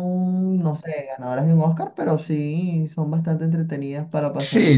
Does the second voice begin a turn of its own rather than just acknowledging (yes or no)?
yes